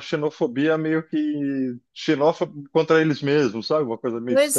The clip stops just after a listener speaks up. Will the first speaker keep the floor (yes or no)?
no